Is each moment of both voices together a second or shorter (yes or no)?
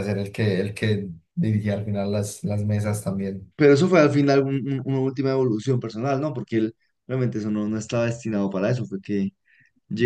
yes